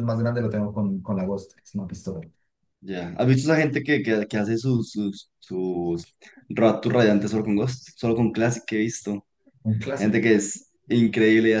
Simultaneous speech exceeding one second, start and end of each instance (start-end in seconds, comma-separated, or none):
none